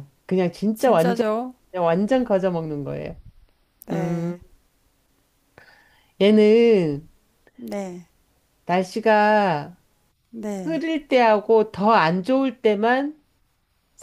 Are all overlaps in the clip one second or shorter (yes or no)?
yes